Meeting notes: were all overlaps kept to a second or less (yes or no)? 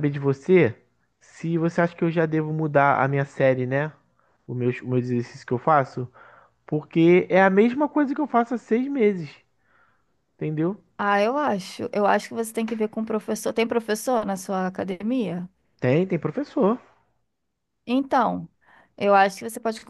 yes